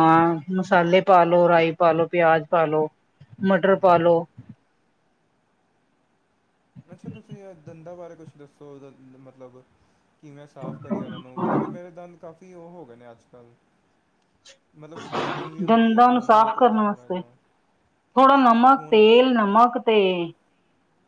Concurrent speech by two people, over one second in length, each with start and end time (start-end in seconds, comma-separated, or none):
15.7-17.2